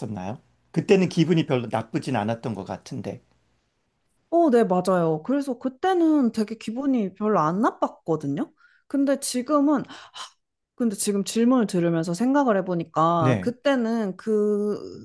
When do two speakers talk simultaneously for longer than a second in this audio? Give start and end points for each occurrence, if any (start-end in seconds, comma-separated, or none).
none